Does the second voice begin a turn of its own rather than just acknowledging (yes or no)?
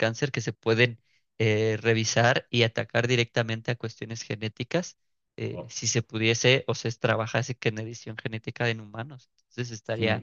no